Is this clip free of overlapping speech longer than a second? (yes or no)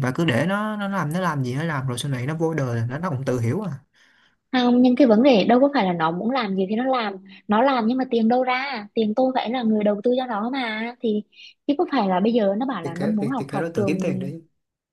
no